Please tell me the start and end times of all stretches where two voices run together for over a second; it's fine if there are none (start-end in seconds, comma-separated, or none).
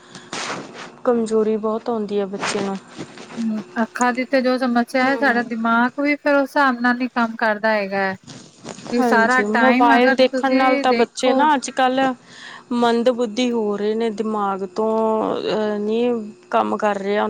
9.0-11.3